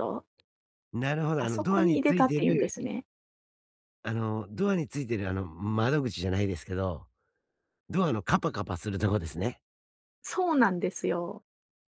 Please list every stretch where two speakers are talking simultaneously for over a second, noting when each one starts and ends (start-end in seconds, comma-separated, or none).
1.4-2.7